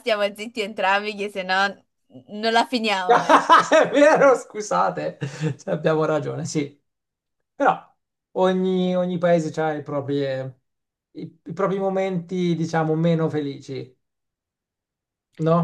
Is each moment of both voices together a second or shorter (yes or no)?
yes